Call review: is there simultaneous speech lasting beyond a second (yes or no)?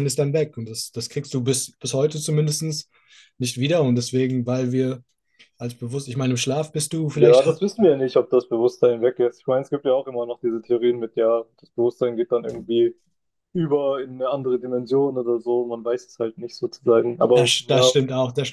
no